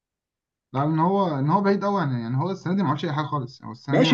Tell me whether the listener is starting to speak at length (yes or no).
yes